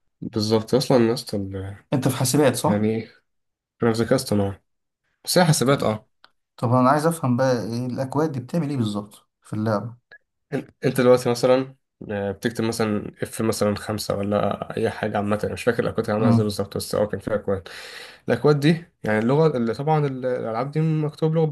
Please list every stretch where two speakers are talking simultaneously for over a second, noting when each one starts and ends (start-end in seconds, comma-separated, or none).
none